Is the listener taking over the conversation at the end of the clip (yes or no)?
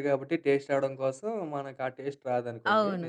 yes